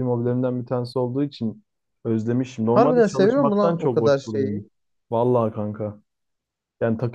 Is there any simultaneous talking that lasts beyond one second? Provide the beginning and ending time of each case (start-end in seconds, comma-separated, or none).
2.7-4.6